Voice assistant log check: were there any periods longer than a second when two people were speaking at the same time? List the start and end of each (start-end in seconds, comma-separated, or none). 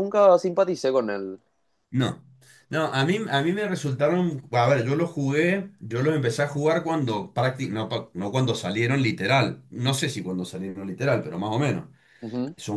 none